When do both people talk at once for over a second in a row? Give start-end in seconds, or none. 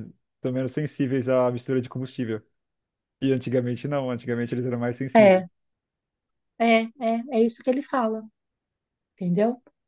none